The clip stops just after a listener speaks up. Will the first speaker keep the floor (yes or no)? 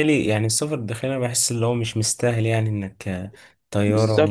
no